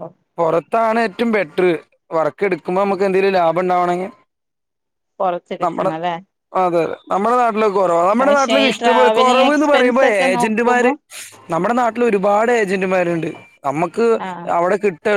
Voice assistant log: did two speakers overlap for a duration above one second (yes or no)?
yes